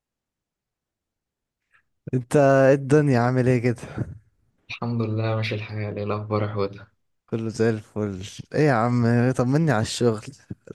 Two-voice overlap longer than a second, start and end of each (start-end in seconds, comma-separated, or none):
none